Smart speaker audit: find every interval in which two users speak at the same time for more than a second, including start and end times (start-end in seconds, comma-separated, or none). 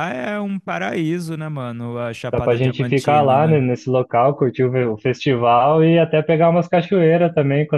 2.3-3.6